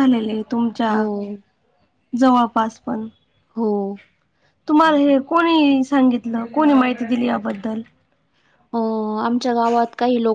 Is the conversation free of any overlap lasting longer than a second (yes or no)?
yes